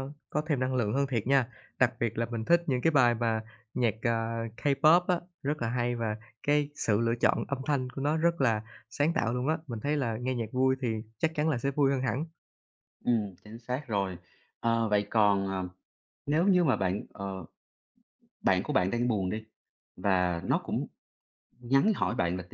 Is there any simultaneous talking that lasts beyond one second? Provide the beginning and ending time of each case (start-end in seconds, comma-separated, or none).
none